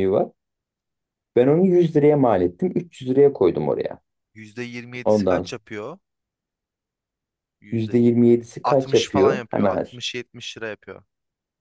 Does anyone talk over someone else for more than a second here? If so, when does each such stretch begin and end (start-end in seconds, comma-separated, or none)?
7.7-9.8